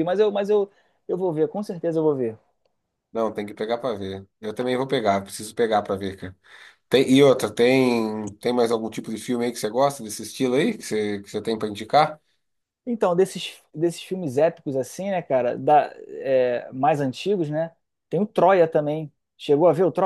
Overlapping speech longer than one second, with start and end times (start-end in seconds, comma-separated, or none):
none